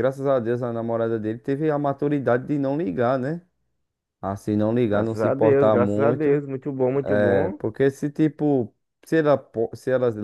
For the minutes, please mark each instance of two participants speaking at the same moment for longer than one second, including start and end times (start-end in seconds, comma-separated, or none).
4.9-6.4